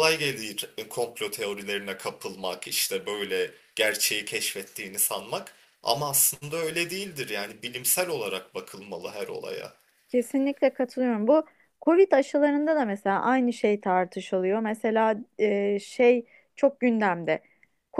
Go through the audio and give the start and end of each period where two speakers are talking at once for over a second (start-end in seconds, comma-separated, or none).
none